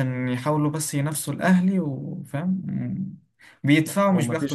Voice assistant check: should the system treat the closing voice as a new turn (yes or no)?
no